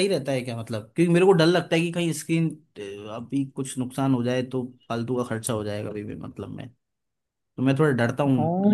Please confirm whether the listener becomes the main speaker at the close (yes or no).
yes